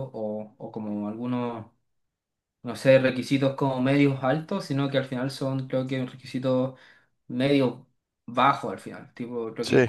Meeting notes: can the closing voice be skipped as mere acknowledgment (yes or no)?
yes